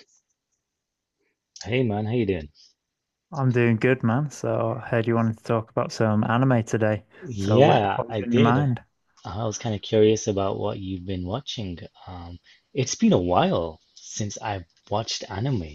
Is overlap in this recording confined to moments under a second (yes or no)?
no